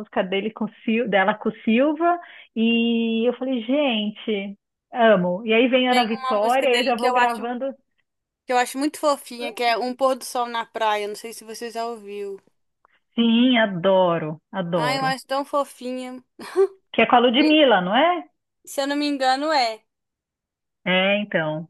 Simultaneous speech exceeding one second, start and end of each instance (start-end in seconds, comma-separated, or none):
6.2-7.4